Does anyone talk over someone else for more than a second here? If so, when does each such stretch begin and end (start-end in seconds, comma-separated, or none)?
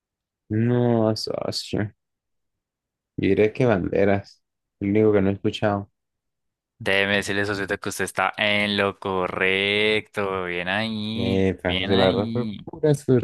11.1-12.6